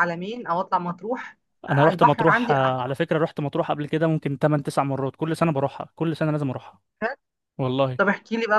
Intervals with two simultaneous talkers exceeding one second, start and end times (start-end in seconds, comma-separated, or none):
1.7-2.9